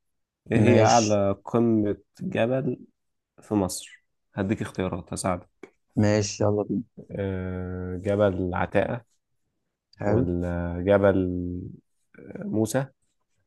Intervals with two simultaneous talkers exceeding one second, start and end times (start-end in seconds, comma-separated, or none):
none